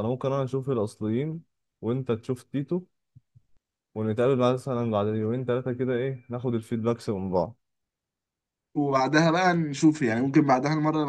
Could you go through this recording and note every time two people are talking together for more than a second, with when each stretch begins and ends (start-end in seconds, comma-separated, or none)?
none